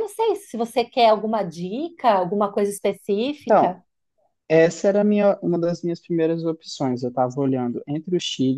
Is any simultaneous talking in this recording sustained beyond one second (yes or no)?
no